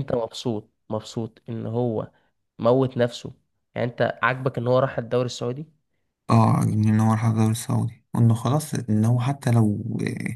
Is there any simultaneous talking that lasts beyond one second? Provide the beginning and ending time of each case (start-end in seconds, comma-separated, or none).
none